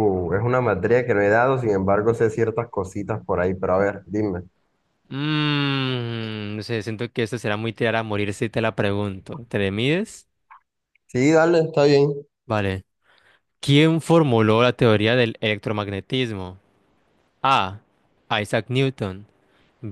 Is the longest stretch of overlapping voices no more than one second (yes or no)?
yes